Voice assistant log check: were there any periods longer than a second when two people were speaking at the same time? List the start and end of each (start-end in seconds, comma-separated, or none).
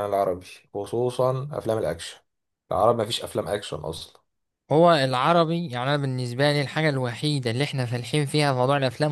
none